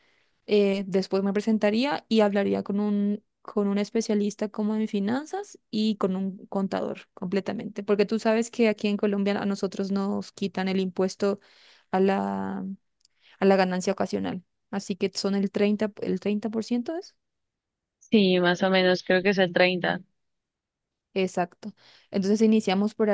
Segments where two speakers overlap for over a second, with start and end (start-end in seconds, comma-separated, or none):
none